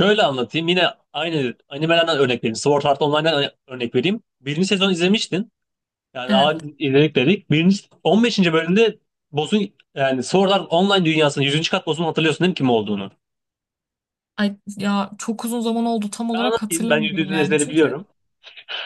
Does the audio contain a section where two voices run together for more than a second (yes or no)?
yes